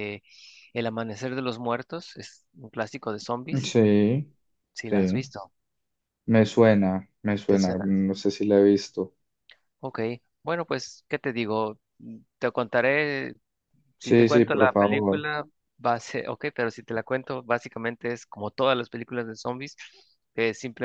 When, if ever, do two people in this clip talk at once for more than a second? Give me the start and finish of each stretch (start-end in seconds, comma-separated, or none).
14.0-15.3